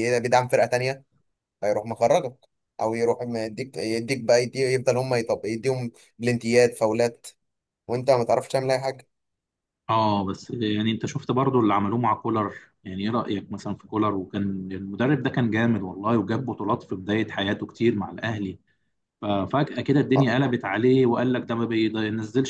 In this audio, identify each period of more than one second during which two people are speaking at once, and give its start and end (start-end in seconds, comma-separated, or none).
none